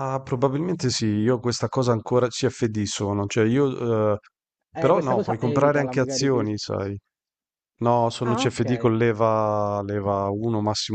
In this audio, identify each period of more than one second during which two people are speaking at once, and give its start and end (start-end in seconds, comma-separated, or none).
4.8-6.5